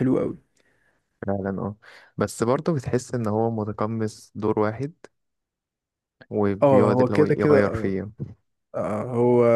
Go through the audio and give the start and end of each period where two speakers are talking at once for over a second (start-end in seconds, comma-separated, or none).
6.6-8.0